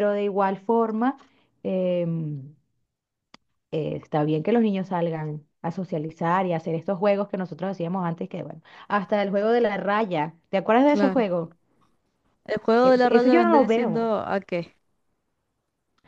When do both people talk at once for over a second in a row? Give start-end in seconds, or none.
12.8-14.1